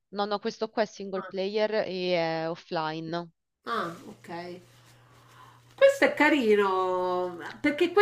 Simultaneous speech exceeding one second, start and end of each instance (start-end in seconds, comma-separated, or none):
none